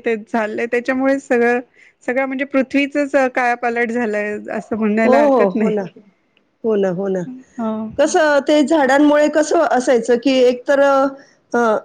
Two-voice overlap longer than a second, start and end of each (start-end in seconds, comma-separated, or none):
none